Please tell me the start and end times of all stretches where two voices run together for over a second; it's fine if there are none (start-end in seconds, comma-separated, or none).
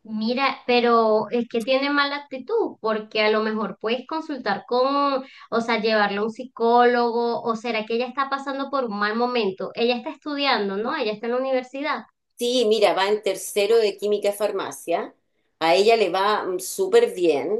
none